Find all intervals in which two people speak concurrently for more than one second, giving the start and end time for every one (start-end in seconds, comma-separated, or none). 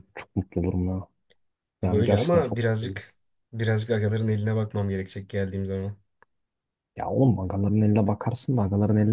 1.8-3.0